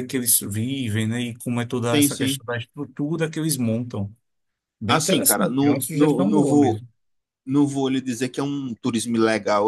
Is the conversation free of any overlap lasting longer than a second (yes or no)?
no